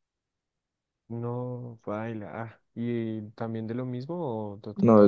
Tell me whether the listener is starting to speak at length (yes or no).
yes